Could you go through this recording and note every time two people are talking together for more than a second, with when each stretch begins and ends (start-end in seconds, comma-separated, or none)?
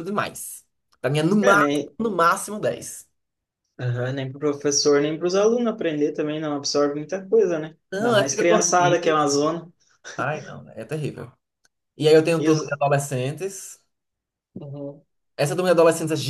7.9-9.2